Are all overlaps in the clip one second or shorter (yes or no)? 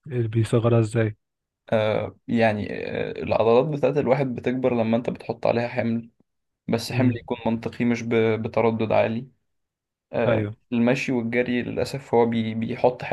yes